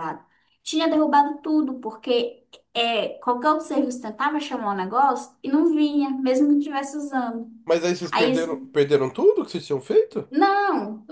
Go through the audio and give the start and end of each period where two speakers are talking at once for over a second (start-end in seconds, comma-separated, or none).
none